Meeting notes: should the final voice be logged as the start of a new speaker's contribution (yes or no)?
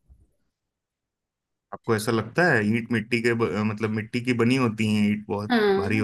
yes